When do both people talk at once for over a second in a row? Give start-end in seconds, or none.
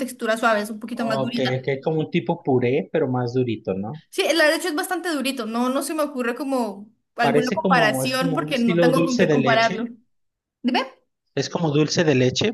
7.2-9.8